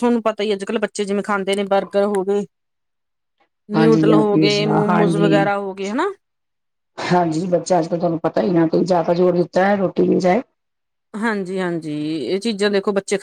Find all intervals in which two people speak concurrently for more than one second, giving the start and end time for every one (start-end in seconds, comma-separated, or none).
3.8-5.3